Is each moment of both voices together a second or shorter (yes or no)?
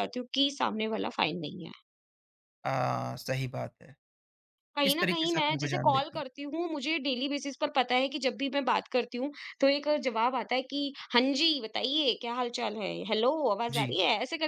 no